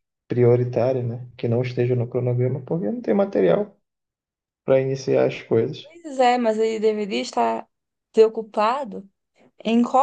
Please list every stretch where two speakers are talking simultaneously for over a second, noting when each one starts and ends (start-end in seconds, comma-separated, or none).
none